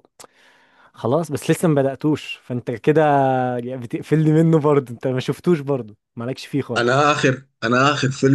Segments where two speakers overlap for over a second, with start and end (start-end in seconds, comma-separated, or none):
none